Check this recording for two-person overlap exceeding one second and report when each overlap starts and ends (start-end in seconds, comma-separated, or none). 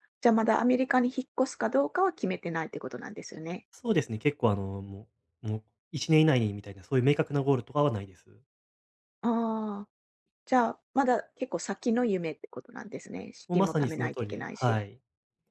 13.5-14.8